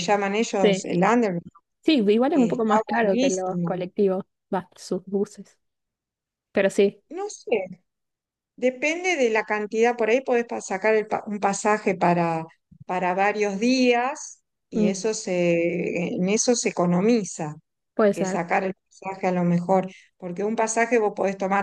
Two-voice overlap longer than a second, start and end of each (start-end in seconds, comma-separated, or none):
2.3-3.8